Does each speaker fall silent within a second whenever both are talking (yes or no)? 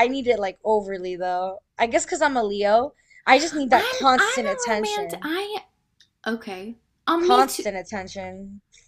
no